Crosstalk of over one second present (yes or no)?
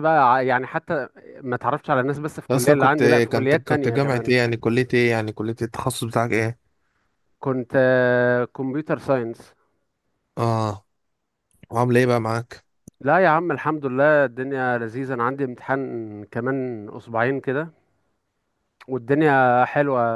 yes